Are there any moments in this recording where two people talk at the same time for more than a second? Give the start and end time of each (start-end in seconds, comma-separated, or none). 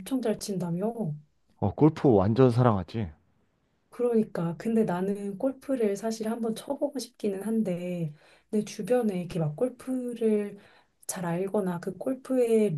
none